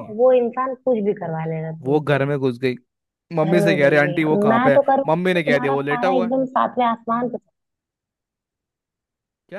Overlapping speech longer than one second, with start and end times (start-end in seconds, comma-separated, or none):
3.4-6.3